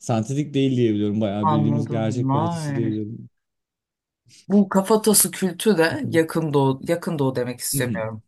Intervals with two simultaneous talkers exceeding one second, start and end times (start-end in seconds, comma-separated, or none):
1.4-2.9